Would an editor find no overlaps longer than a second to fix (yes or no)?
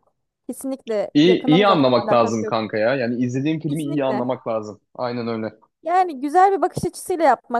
no